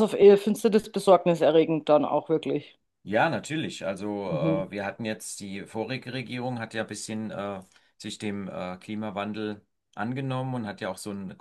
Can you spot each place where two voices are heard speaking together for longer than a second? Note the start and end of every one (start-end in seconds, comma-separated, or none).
none